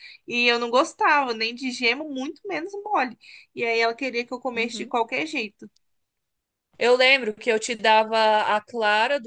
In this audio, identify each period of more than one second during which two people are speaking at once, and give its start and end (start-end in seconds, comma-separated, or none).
none